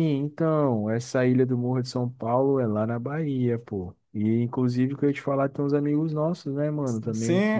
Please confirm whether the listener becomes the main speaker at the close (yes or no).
yes